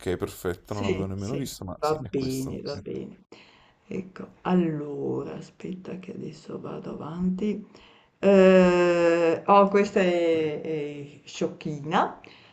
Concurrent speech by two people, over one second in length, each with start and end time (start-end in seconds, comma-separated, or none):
0.6-3.1